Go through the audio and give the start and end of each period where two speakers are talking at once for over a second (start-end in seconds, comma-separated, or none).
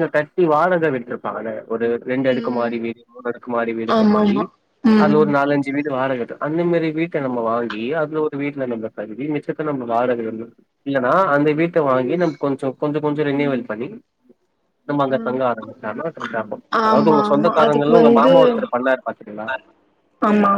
16.9-18.3